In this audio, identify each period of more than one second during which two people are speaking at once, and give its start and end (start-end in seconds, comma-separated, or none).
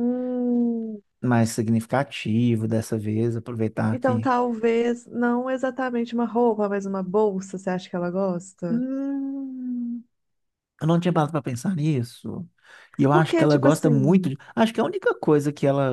13.1-14.3